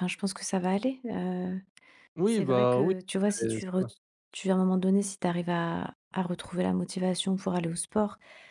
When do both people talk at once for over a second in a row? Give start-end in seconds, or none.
2.2-3.8